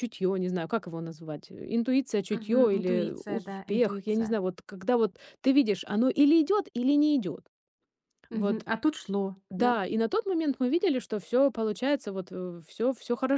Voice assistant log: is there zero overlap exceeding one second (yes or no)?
no